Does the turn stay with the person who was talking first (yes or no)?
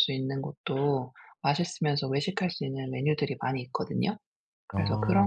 yes